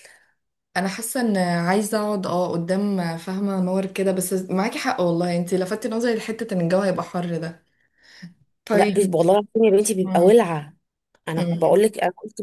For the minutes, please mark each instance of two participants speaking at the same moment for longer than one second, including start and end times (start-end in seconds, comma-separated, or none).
none